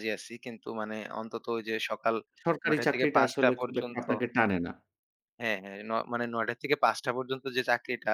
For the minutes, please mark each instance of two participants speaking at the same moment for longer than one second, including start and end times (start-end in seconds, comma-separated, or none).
2.4-4.0